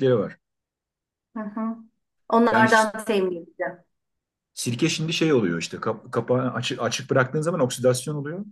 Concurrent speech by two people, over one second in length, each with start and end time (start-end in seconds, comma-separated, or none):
none